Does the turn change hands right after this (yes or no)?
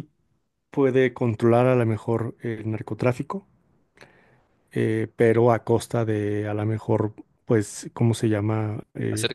yes